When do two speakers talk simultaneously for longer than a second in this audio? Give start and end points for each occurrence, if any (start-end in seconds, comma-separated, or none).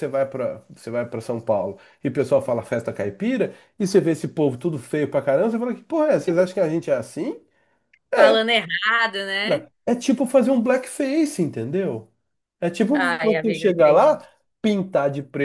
12.9-14.2